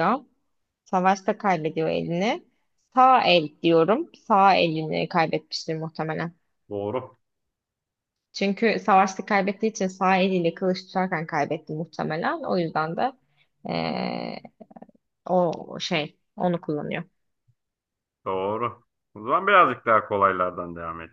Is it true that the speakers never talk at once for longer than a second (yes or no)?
yes